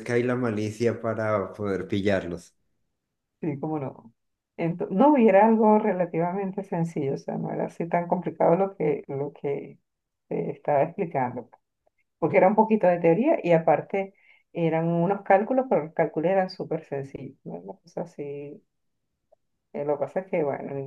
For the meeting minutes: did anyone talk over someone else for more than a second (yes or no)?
no